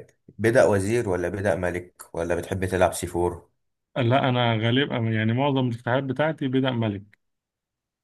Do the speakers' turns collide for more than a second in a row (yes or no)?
no